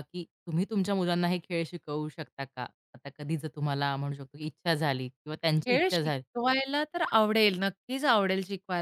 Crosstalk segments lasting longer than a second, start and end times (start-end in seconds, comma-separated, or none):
none